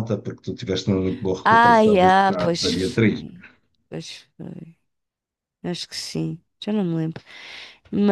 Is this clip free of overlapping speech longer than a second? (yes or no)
no